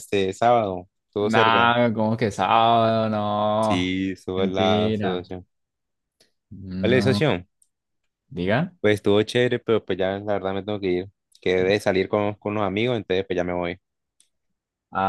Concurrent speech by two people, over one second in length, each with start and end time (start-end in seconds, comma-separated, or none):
3.6-5.2